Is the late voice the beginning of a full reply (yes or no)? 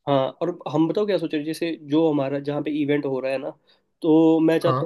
no